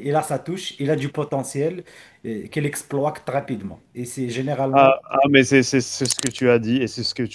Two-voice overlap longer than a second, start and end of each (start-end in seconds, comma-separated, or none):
none